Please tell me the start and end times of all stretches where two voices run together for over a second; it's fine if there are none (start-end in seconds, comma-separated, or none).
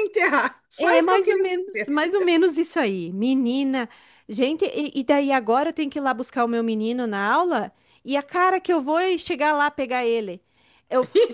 0.8-2.0